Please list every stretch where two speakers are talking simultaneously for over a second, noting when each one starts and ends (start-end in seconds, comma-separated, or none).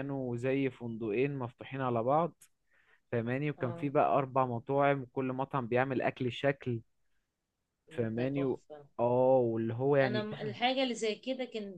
none